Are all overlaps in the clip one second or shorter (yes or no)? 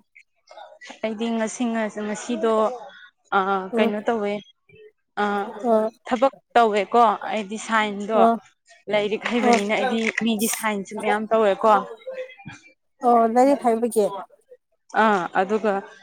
yes